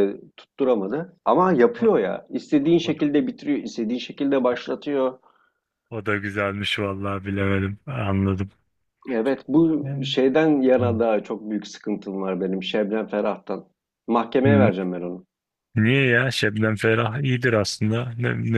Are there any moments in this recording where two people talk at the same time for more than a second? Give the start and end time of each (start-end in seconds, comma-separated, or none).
none